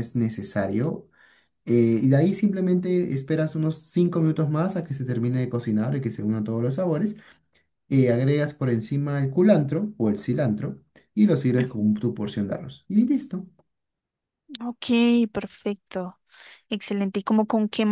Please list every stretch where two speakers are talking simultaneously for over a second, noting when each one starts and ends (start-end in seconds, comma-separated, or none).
none